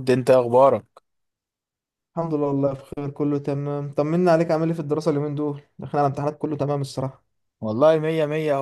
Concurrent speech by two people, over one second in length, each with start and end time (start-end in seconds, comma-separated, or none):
none